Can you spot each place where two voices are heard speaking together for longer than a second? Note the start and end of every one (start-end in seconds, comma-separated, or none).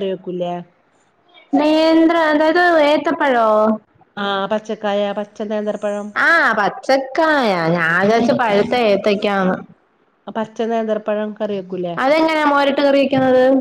none